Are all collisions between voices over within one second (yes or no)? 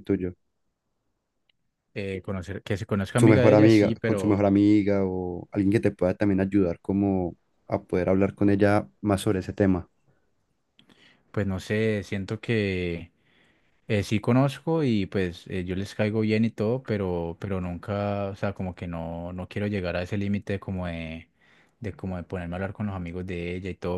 no